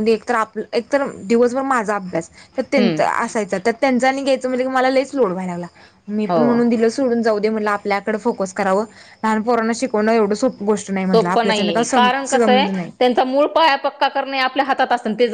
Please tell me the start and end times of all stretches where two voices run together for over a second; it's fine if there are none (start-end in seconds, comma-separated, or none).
11.1-12.9